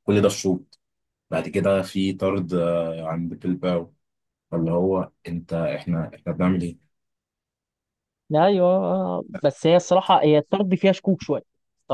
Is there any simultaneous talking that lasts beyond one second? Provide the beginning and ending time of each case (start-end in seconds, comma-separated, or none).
none